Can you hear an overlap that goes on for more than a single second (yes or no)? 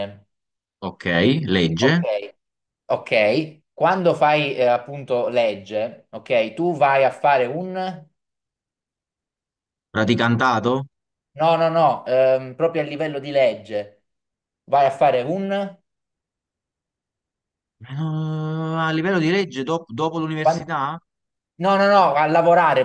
no